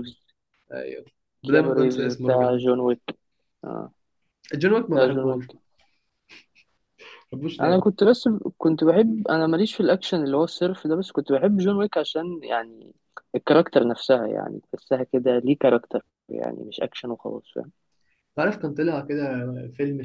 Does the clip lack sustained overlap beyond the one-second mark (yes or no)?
no